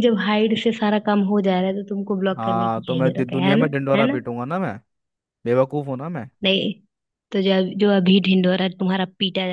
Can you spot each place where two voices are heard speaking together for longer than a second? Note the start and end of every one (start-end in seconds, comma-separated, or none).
2.4-4.2